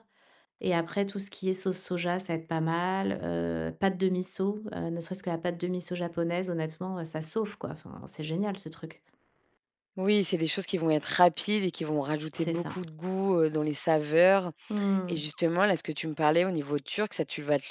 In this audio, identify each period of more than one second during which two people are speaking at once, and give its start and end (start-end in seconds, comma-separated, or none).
none